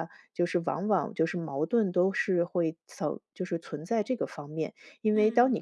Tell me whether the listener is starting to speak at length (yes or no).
no